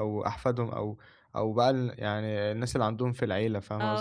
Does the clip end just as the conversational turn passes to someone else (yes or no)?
yes